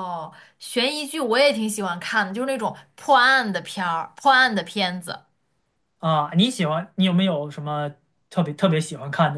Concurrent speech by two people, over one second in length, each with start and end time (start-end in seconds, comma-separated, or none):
none